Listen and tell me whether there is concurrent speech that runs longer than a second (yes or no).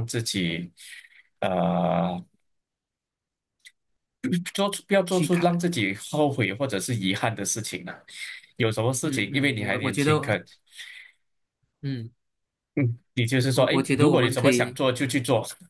yes